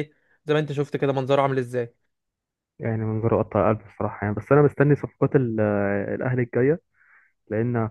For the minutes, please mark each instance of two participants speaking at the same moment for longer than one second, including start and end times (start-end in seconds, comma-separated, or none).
none